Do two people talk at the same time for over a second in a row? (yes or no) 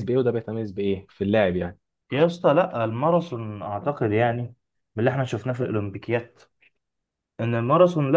no